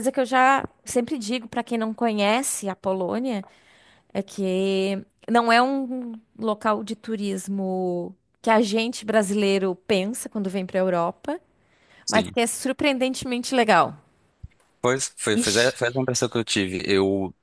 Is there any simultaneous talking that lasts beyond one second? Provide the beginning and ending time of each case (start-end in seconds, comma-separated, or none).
none